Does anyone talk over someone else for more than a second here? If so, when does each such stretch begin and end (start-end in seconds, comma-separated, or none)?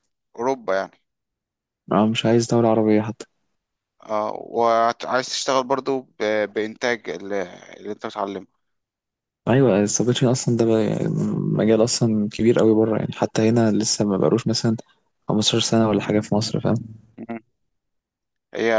none